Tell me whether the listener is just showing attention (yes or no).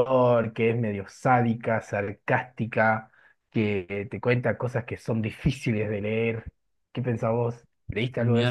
no